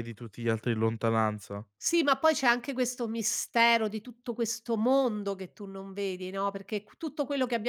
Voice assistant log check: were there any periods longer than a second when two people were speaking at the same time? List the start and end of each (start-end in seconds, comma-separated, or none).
none